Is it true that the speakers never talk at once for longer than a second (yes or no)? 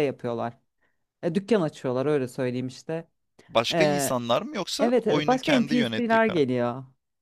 no